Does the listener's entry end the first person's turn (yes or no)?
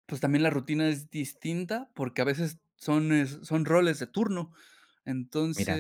no